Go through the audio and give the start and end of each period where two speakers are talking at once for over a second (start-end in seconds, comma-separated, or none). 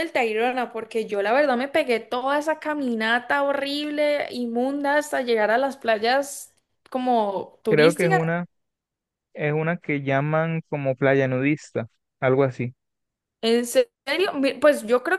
none